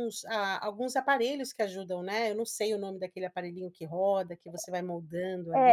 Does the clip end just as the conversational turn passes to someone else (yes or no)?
yes